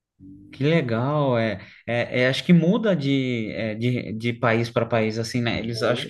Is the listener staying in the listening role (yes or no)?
yes